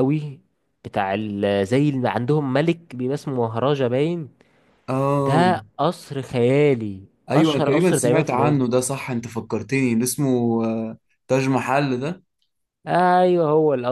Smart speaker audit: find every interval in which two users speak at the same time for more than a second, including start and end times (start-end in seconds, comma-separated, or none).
7.3-8.6